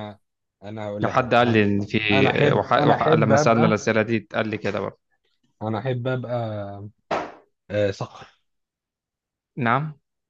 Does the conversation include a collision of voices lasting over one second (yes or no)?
yes